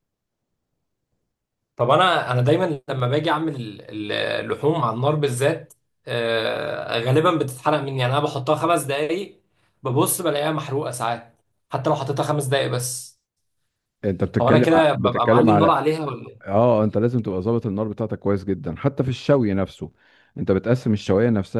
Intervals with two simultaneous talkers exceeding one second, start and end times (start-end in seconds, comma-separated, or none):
14.4-15.8